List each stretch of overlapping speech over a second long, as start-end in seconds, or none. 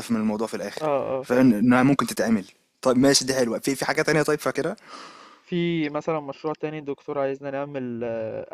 none